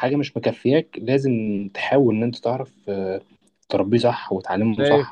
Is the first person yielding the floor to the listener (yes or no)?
yes